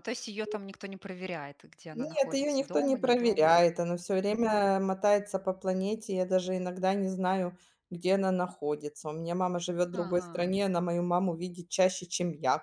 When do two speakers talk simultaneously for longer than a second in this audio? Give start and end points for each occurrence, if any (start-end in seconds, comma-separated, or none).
1.9-3.5